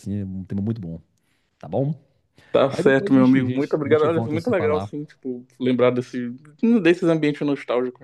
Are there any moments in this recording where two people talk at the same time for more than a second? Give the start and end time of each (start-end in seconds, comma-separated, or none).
2.7-4.9